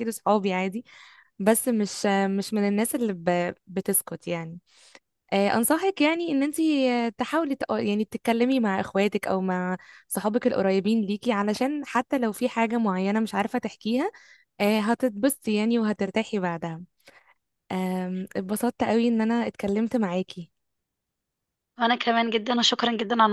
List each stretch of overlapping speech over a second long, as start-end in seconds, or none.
none